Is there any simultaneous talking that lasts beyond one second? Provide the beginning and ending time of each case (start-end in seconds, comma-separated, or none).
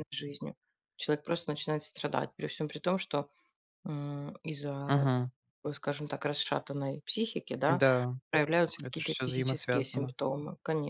8.8-10.1